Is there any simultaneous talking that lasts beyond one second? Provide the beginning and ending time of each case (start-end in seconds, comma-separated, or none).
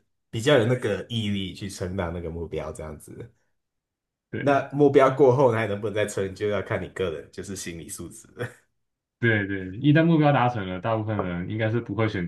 none